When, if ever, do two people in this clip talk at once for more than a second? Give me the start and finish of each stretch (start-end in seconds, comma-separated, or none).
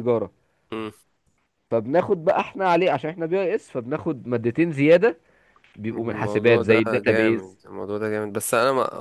5.9-7.6